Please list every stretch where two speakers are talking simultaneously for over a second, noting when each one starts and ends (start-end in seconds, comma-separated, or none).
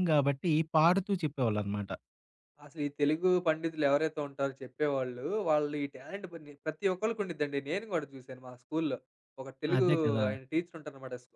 none